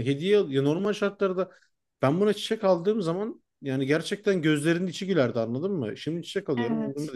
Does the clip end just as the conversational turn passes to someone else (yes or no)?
no